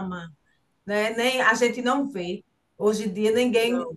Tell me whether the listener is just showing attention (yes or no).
yes